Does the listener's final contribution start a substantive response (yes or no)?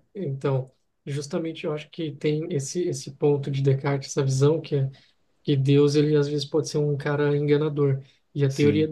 no